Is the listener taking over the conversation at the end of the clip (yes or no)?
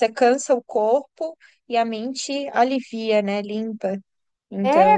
yes